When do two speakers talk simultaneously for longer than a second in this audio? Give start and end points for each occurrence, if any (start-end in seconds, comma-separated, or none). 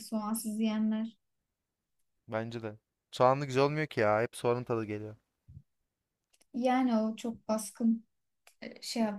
none